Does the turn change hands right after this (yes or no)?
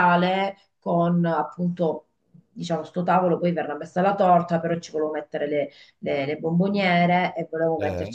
no